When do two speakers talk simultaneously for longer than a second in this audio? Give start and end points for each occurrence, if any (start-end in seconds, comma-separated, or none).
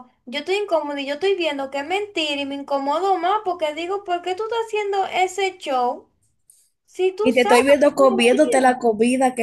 7.2-8.9